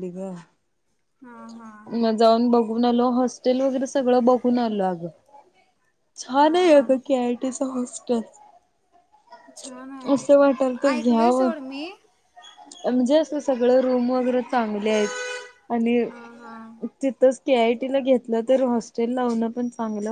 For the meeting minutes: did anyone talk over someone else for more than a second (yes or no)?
yes